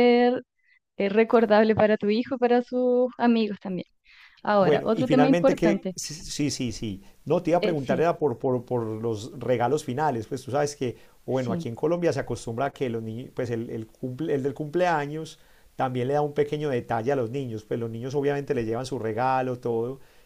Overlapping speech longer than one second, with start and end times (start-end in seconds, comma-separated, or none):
4.6-6.0